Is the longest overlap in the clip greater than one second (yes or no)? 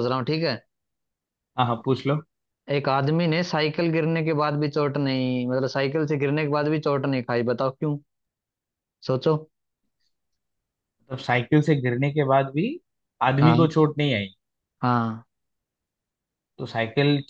no